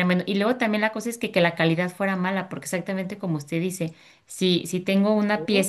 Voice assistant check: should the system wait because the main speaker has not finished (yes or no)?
yes